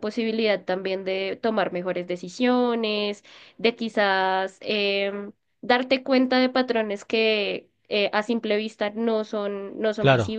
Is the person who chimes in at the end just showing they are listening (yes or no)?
yes